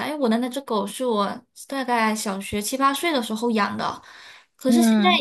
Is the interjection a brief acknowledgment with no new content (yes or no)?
yes